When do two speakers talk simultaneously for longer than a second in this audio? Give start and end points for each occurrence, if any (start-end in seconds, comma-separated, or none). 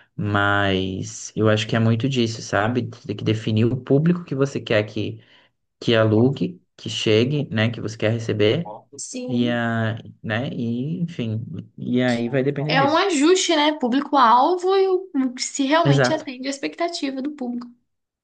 none